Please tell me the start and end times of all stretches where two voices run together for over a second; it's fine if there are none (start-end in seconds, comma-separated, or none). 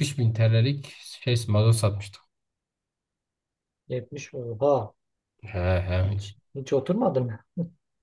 none